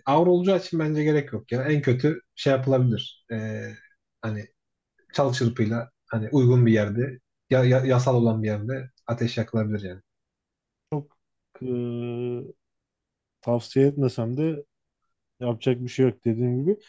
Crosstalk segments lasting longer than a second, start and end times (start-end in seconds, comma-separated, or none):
none